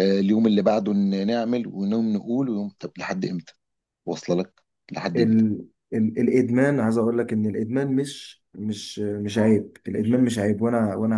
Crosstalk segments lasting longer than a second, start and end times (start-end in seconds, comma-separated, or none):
none